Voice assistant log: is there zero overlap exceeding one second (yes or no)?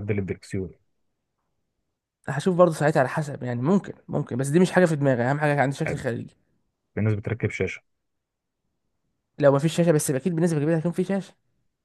yes